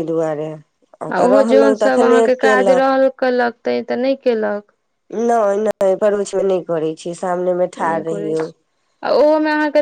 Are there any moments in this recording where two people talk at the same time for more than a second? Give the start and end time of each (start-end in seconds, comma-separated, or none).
1.1-2.9